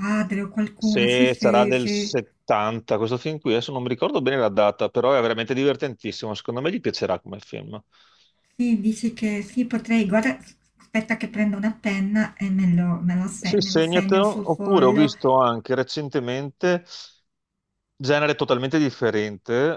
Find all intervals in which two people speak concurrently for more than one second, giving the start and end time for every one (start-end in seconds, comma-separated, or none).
0.8-2.2, 13.4-15.1